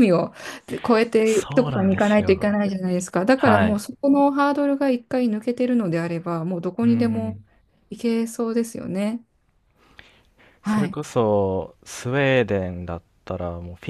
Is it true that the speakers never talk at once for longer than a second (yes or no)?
no